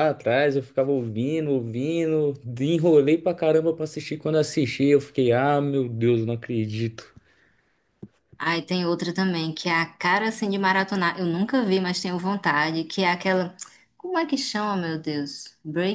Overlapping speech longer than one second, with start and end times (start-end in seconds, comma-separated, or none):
none